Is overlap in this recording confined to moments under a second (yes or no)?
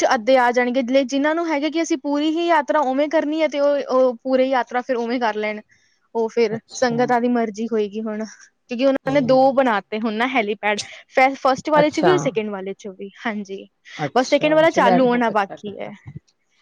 no